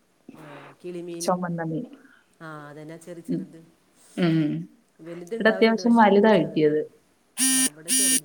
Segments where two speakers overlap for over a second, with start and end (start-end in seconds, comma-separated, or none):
5.3-6.8